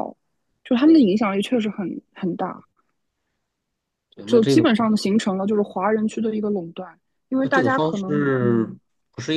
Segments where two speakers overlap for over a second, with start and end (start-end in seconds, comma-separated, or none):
7.4-8.8